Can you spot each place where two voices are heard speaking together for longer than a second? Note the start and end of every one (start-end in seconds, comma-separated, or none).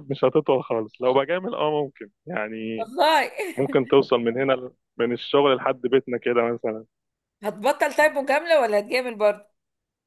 none